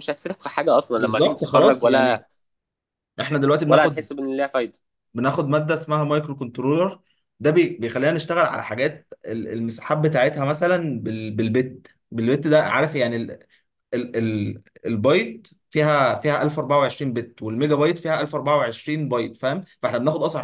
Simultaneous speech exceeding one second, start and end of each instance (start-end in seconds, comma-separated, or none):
1.0-2.2